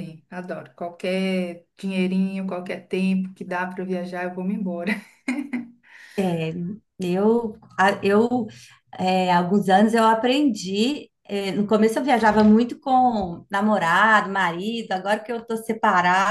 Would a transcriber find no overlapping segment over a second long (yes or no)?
yes